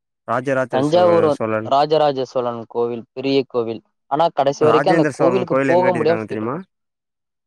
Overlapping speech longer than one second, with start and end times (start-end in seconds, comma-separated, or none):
4.7-6.6